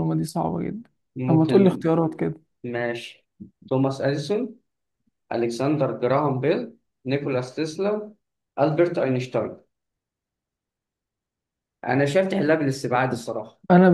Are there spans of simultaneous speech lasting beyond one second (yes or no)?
no